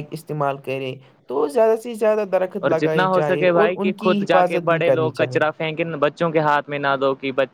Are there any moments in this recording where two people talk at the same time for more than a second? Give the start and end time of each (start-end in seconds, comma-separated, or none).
2.6-5.4